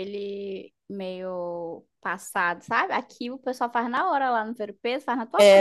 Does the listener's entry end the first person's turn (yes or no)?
yes